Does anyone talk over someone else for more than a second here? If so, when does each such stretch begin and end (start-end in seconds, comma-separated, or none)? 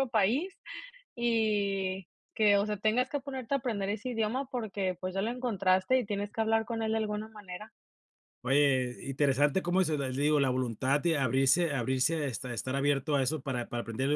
none